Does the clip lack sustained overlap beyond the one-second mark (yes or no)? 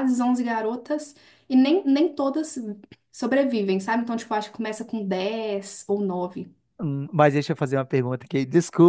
yes